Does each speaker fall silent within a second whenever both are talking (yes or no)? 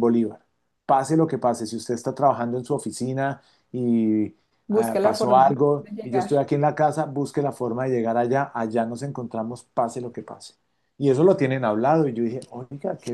no